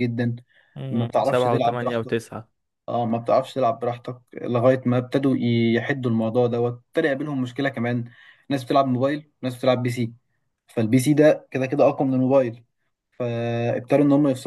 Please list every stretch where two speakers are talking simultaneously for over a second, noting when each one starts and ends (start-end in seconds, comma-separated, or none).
0.9-2.1